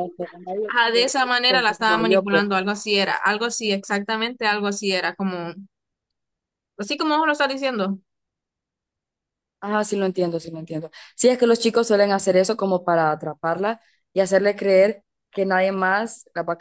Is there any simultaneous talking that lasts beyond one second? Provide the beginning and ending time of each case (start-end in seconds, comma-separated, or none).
0.7-2.4